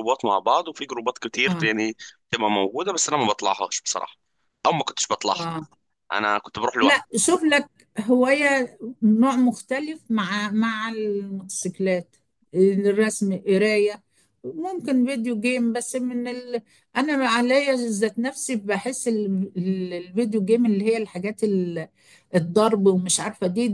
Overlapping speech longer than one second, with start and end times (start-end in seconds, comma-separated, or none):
none